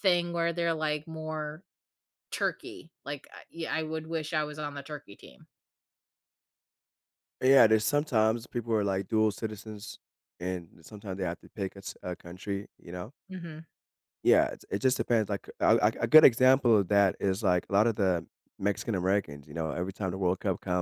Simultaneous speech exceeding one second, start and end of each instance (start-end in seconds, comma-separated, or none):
none